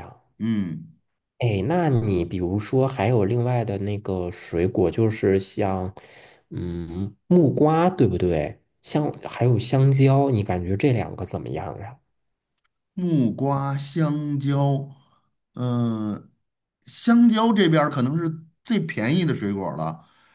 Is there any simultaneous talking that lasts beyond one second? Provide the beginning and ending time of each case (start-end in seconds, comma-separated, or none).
none